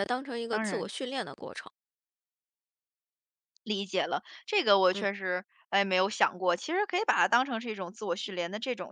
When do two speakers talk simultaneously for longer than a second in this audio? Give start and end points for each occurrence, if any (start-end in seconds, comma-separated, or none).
none